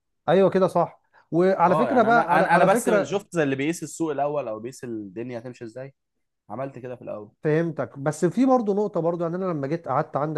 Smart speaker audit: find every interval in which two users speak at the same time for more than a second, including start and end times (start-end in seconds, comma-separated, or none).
1.7-3.2